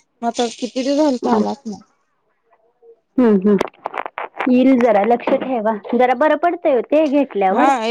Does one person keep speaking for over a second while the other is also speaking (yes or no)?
no